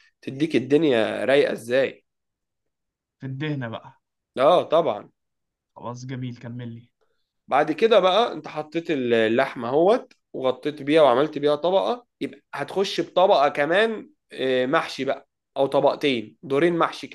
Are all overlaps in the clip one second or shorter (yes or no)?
yes